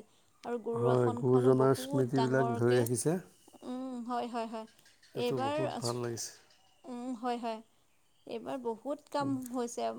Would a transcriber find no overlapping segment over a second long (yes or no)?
no